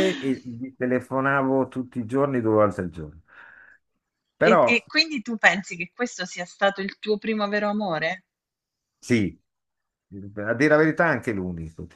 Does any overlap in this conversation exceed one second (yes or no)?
no